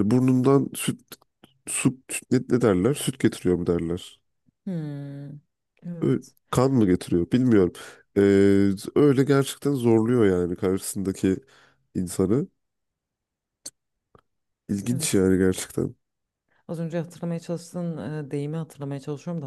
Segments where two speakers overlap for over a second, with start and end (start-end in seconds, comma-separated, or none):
none